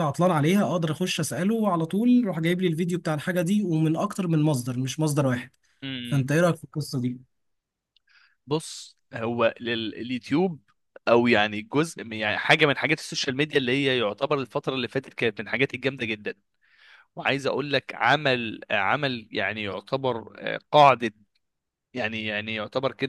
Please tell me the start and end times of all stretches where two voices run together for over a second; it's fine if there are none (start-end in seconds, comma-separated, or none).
none